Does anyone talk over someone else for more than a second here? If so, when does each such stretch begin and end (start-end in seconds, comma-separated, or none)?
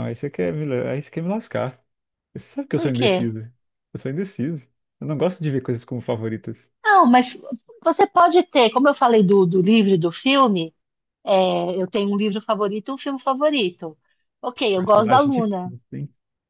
14.5-15.7